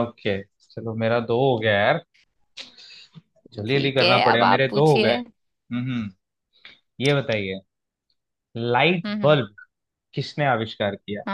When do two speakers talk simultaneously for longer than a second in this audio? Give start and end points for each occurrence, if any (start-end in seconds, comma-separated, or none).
3.7-5.2